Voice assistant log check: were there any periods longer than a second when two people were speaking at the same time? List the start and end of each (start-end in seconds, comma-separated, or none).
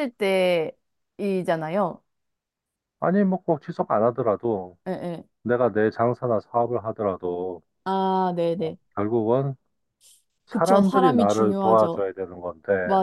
10.5-12.0